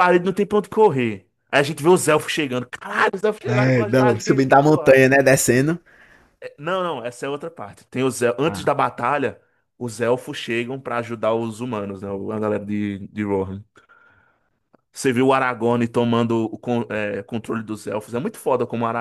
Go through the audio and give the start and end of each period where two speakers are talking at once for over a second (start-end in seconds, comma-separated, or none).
3.4-5.0